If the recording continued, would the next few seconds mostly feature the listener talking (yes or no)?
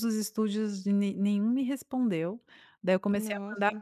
no